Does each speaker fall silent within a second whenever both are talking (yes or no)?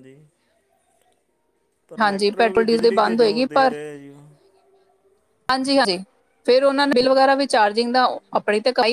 no